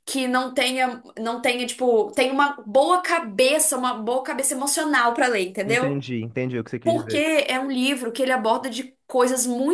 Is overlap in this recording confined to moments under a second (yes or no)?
yes